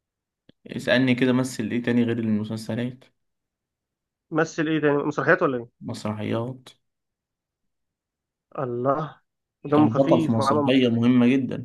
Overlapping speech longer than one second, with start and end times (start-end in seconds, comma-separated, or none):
9.8-11.1